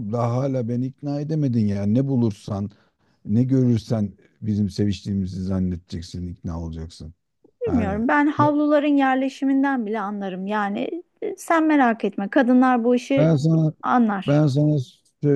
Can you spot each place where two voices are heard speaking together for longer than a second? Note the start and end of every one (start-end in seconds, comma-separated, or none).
none